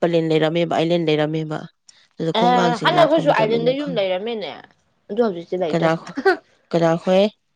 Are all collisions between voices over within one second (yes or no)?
no